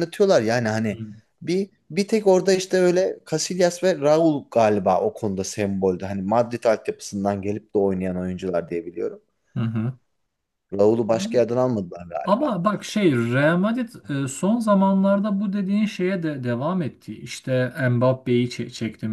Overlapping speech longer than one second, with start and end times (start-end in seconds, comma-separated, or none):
none